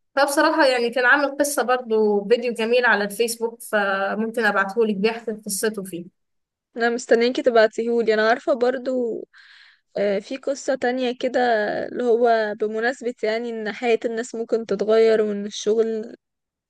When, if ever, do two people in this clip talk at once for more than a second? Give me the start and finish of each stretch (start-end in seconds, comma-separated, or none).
none